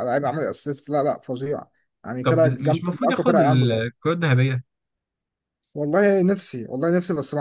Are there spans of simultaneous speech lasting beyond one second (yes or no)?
yes